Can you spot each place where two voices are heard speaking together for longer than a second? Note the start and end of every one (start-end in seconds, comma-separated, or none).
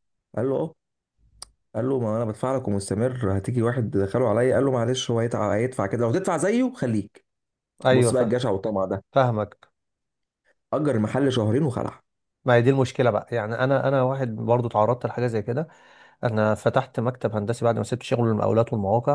none